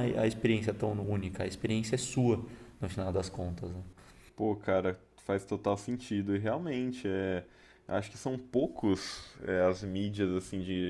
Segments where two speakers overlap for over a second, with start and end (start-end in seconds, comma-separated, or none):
none